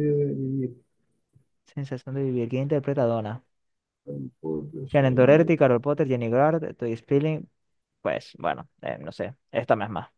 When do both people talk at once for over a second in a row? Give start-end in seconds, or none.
none